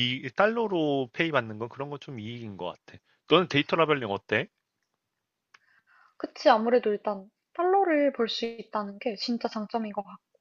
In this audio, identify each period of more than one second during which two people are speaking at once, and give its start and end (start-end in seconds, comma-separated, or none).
none